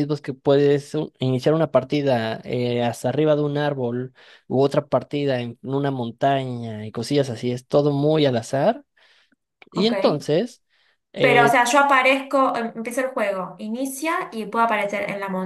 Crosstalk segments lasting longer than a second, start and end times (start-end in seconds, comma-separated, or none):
none